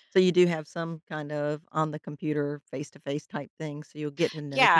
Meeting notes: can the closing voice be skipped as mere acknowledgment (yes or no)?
no